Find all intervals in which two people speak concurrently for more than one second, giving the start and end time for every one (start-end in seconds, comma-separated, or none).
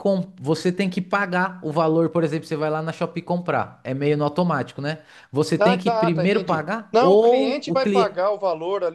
5.6-8.3